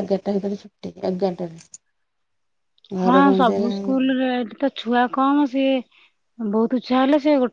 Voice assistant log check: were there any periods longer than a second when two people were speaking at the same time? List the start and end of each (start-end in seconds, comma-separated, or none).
none